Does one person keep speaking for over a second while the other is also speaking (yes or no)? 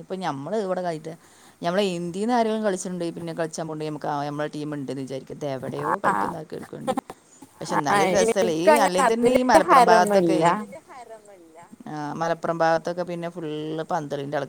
yes